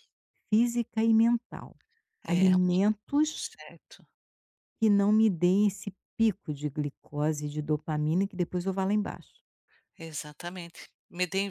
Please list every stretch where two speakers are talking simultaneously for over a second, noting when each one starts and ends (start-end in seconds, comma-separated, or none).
none